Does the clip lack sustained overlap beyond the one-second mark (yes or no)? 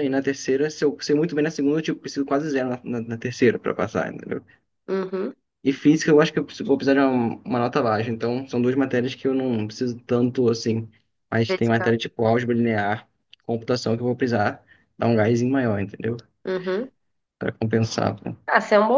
yes